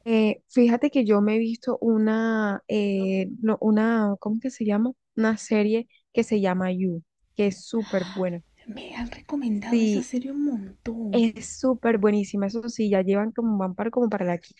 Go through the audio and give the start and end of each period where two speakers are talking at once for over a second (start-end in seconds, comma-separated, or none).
none